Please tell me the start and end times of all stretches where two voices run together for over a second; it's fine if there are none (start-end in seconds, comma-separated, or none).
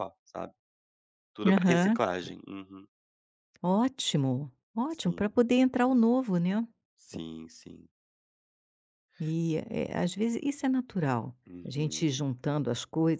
none